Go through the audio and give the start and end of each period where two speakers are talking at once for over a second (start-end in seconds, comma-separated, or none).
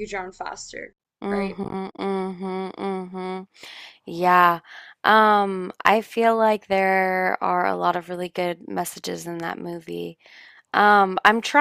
none